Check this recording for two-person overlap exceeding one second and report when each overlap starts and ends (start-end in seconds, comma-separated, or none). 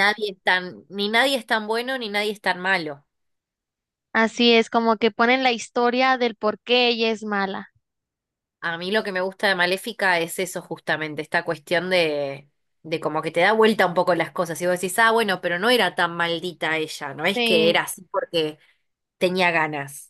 none